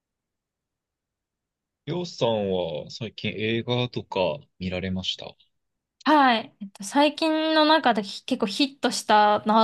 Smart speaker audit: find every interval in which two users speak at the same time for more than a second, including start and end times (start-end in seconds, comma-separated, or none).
none